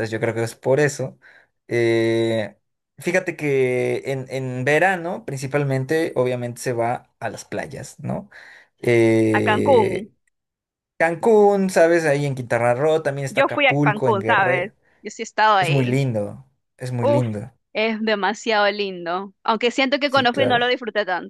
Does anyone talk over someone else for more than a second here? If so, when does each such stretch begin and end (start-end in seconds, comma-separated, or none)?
13.3-14.7